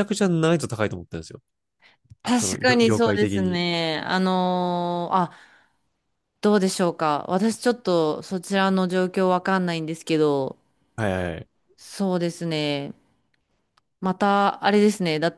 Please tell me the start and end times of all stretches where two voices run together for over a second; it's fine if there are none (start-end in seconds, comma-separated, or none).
2.4-3.6